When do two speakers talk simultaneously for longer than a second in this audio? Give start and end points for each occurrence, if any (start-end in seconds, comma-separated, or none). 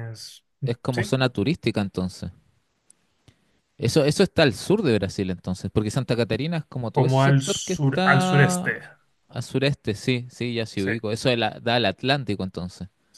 6.9-8.7